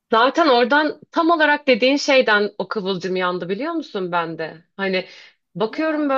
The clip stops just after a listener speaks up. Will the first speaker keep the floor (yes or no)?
yes